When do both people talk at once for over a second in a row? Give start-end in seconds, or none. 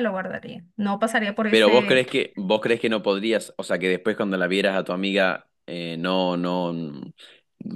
none